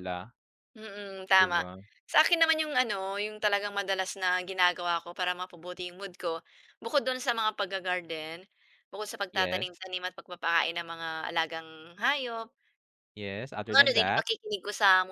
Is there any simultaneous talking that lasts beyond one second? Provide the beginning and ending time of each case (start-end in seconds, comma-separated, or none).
none